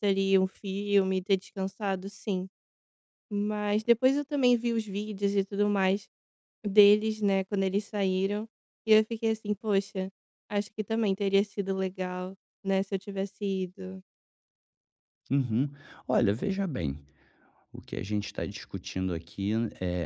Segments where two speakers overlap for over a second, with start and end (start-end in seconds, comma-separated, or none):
none